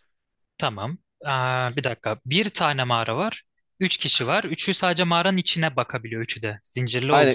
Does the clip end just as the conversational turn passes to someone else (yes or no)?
yes